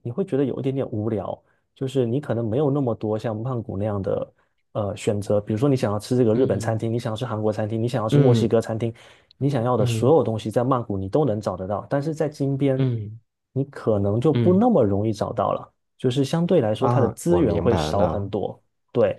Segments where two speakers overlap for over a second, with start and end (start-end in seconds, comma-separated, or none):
16.8-18.3